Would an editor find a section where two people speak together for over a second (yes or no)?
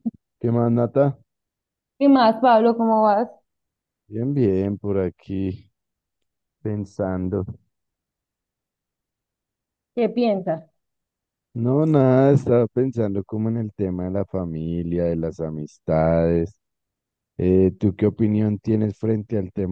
no